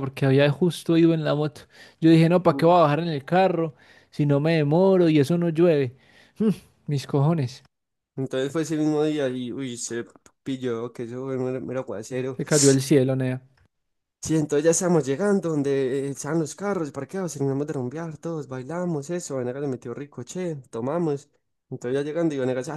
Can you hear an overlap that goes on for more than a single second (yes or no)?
no